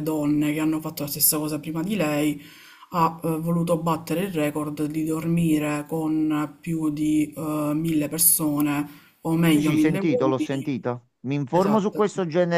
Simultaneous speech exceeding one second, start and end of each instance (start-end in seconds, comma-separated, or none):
9.5-10.7